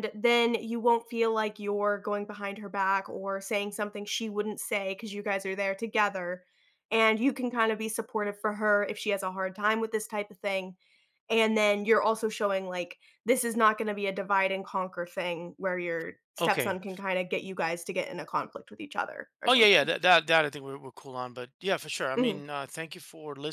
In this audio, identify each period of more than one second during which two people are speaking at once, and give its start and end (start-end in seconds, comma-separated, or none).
none